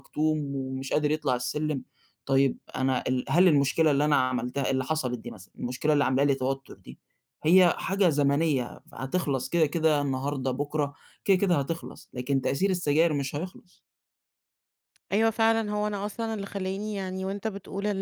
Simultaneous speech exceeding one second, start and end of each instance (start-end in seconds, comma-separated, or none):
none